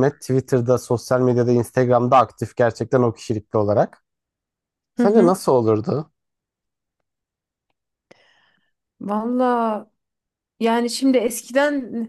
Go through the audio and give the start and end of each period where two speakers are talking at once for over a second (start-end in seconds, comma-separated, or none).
none